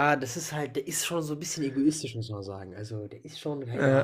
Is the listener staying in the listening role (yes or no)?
yes